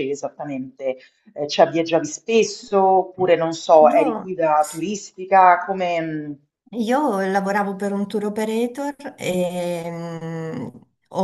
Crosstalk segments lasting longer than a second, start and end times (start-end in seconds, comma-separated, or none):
none